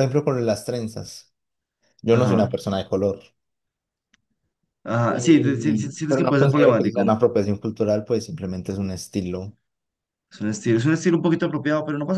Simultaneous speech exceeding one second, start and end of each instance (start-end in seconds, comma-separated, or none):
5.1-7.2